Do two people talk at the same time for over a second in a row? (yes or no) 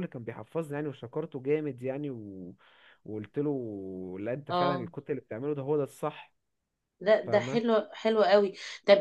no